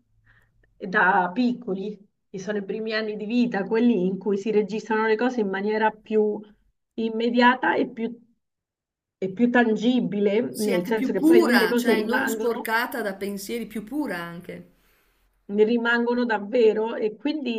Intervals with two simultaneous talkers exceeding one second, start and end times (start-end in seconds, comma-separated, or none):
10.5-12.7